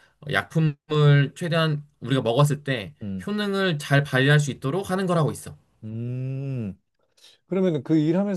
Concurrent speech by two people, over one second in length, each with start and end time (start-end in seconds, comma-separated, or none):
none